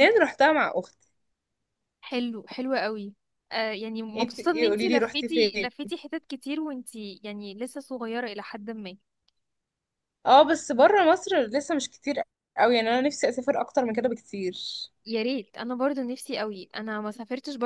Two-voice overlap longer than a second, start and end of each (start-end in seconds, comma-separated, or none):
4.2-5.7